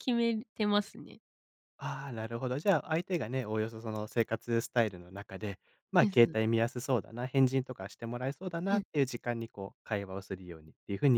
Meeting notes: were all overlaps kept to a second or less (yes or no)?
yes